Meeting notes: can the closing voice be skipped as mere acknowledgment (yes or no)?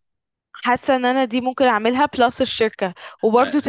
yes